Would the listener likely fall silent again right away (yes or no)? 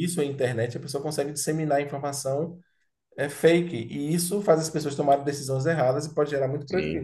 no